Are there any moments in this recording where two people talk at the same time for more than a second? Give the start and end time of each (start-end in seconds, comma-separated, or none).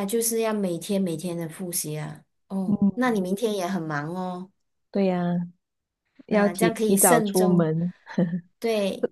6.3-7.7